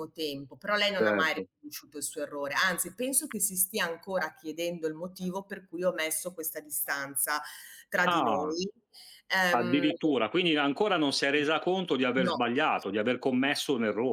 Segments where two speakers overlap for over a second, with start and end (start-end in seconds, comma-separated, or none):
none